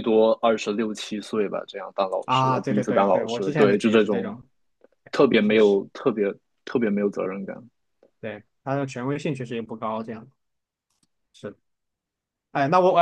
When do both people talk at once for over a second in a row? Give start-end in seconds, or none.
2.2-4.3